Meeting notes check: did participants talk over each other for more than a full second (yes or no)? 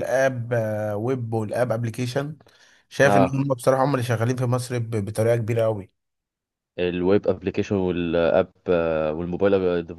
no